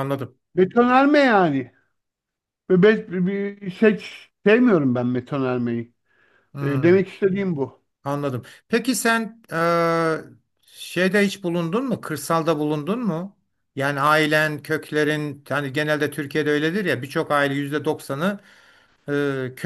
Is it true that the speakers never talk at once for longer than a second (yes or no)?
yes